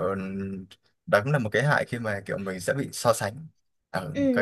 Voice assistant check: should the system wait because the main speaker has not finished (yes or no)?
no